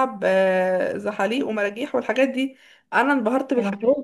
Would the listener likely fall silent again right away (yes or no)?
yes